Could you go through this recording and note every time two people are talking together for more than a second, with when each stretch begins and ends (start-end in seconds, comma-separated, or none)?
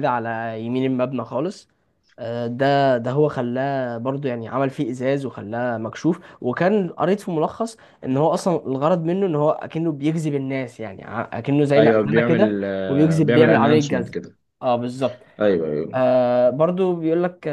11.8-14.2